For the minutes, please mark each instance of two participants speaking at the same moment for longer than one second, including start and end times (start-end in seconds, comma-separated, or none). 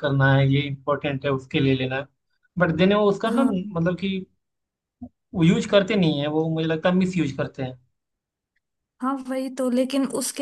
none